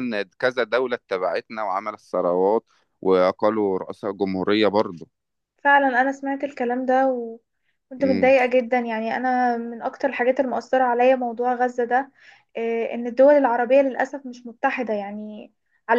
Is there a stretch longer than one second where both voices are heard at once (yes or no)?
no